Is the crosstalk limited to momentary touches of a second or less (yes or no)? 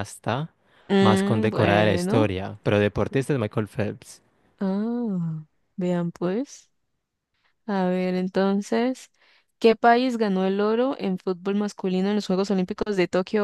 no